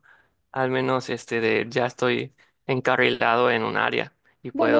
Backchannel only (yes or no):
no